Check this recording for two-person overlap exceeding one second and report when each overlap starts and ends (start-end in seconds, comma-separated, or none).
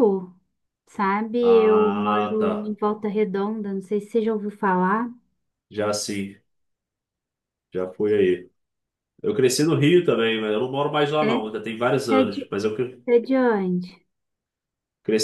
1.4-2.7